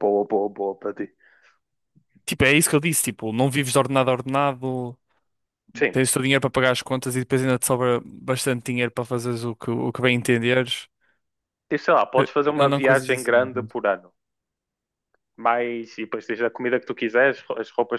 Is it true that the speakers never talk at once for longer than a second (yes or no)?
no